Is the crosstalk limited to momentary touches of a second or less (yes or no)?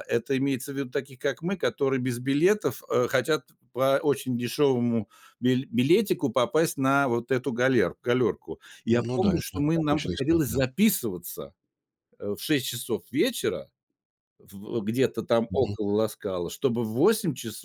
no